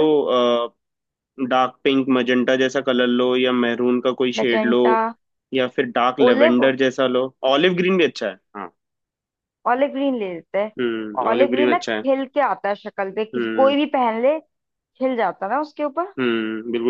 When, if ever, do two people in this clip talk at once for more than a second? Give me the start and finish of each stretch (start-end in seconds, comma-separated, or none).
10.8-12.1